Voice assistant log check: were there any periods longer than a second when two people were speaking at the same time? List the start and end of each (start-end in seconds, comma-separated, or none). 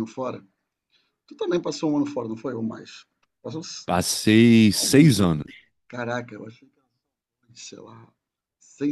none